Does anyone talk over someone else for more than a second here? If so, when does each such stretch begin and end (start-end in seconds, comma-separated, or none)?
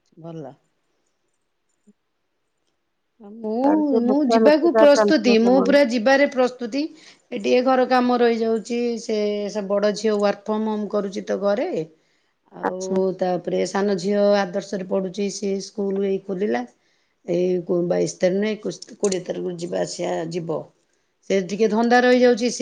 3.6-5.7